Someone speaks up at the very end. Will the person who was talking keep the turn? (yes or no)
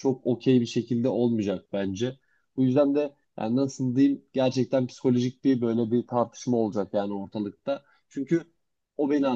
yes